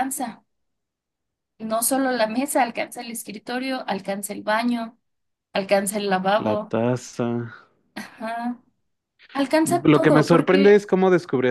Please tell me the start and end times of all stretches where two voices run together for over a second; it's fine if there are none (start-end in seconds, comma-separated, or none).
9.6-10.8